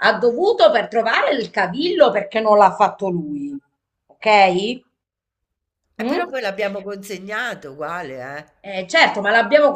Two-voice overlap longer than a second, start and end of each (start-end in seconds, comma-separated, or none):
none